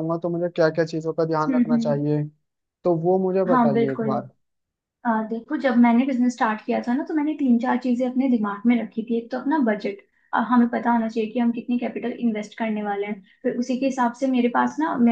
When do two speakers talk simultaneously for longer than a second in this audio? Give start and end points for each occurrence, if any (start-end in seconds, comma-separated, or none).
none